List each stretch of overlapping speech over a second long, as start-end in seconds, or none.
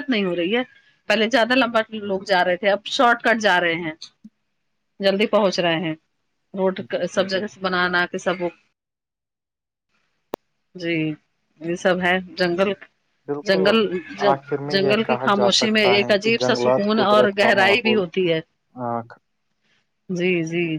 14.7-18.0